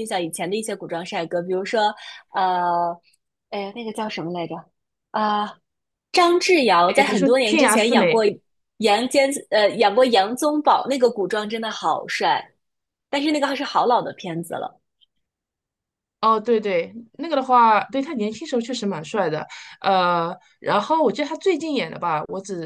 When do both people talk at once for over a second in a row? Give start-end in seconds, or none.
6.9-8.1